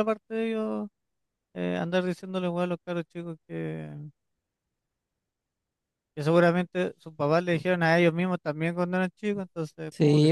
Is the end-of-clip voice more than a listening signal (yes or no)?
yes